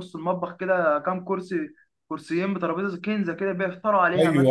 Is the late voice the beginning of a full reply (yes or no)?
yes